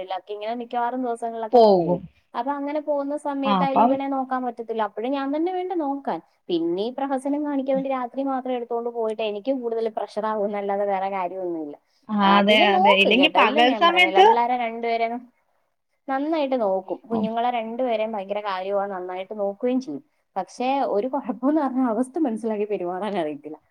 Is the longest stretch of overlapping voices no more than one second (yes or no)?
no